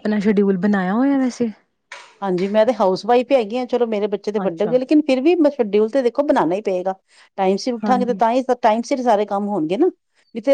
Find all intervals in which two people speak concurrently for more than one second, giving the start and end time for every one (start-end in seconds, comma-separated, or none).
none